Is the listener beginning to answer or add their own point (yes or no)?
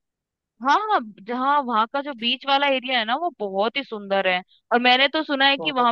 no